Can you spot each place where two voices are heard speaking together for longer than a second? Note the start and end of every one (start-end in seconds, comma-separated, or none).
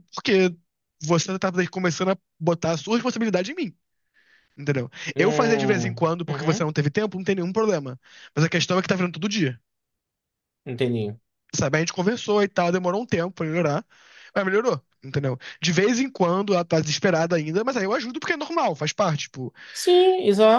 5.2-6.7